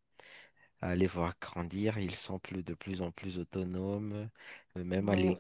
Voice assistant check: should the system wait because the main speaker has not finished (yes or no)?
yes